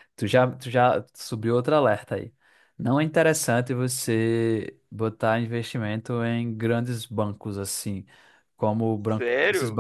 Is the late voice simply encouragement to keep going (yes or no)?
yes